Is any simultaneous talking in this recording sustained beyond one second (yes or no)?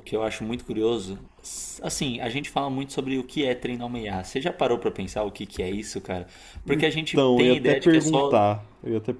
yes